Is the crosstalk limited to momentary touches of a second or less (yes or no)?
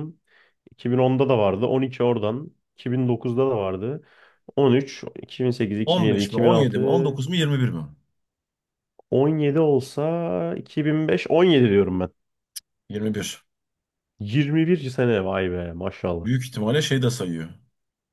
no